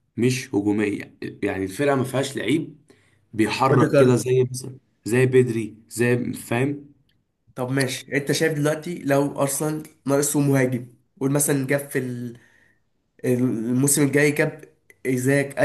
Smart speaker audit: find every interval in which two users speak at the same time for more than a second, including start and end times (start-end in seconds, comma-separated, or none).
none